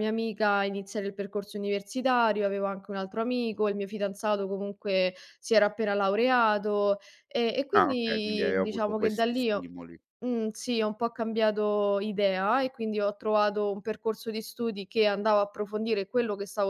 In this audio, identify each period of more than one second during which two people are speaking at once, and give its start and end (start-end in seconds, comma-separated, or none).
7.8-9.7